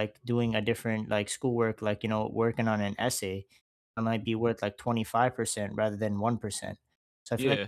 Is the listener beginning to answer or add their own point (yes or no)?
no